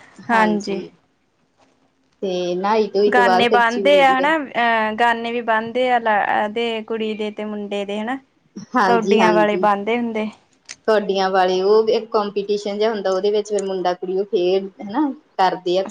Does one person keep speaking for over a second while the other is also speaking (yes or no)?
no